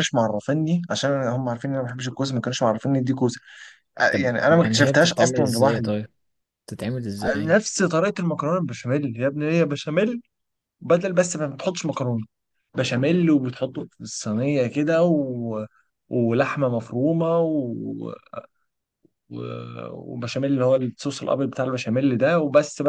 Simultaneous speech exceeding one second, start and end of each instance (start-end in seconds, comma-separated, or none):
4.1-5.9